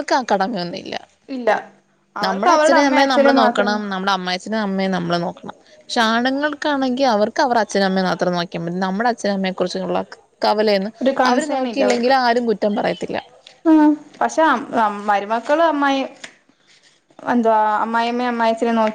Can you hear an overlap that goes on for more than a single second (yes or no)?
yes